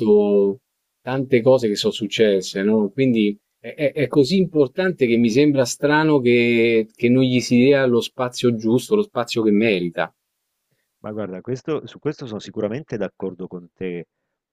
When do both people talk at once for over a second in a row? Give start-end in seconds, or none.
none